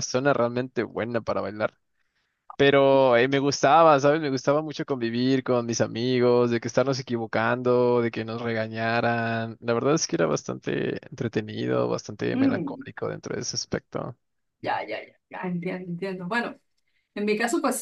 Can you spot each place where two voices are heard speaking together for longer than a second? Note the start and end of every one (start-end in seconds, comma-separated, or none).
none